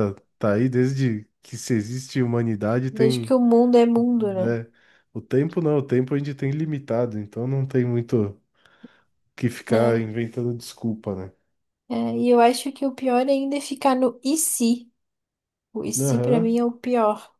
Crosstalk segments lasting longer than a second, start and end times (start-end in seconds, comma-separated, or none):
none